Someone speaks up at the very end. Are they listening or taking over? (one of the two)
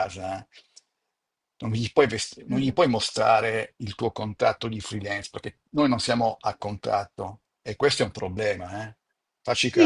taking over